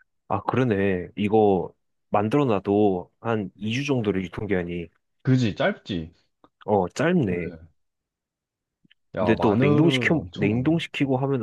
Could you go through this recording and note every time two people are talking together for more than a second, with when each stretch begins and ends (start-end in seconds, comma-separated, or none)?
9.2-10.8